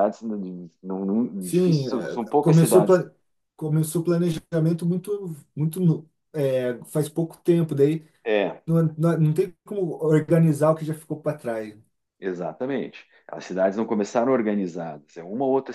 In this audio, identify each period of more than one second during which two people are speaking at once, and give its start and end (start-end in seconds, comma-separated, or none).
1.4-3.0